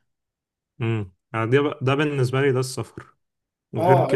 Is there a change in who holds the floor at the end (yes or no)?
yes